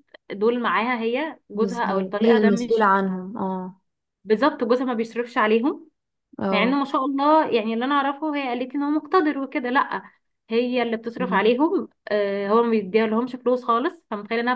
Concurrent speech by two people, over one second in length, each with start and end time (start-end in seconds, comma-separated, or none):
1.5-2.9